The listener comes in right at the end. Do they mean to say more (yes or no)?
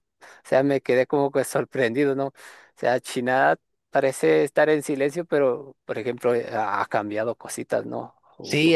yes